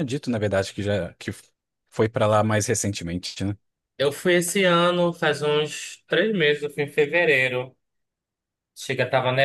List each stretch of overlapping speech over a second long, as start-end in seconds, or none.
none